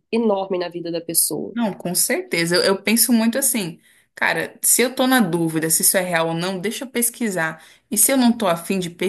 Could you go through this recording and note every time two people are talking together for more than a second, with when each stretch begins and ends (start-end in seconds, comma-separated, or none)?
none